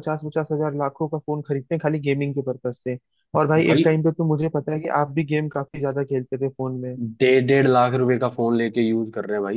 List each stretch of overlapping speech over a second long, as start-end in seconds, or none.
none